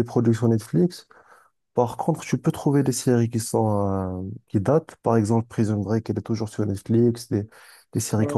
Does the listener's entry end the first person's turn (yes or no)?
no